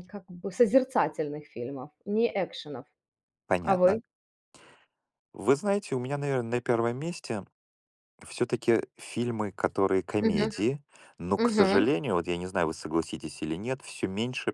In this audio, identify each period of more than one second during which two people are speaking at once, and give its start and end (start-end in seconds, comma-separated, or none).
none